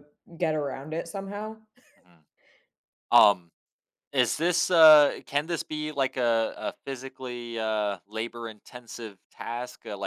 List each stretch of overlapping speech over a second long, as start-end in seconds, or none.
none